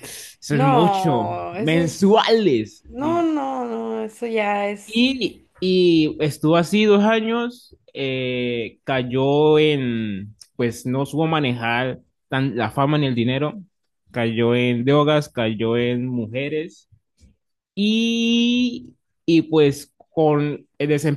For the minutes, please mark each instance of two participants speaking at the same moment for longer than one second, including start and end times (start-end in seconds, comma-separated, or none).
0.5-2.3